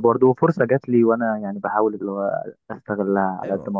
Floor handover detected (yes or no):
yes